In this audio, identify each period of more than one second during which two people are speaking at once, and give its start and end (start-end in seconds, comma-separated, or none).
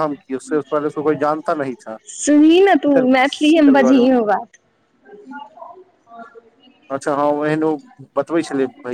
2.2-4.1